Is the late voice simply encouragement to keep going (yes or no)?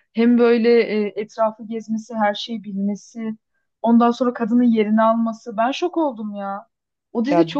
no